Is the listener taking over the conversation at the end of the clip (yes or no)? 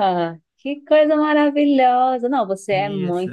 no